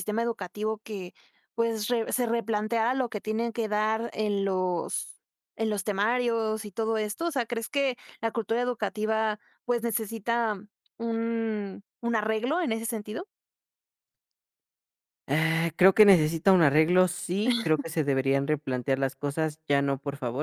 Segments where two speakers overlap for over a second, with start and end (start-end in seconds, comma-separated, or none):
none